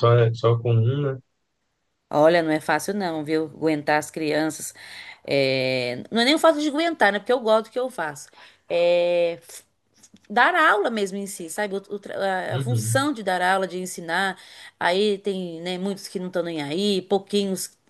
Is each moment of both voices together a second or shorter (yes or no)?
yes